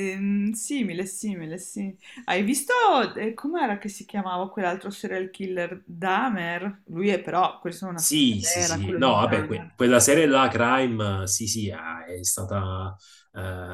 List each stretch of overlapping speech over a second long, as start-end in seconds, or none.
8.0-9.8